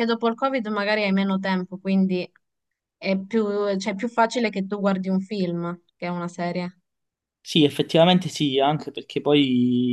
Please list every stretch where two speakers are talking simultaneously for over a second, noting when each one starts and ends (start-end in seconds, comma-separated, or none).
none